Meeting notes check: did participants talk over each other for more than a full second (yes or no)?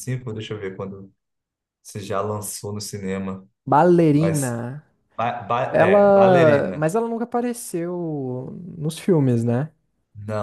yes